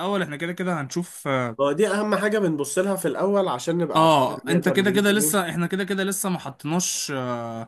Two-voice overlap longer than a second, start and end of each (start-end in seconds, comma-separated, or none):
3.9-5.5